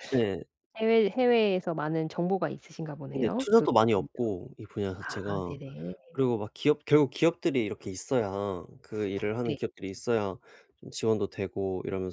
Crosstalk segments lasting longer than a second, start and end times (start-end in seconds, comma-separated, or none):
none